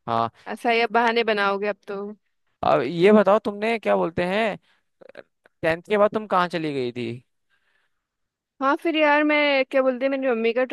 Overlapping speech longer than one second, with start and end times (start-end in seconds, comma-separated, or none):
none